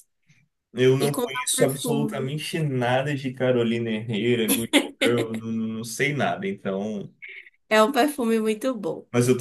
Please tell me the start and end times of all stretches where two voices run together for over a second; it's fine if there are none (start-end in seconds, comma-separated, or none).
1.0-2.3